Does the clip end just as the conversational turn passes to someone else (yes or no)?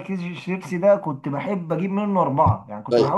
no